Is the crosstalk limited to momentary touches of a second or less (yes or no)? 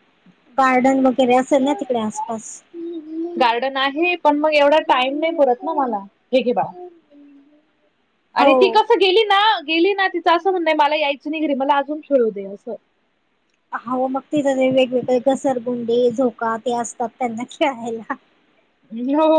yes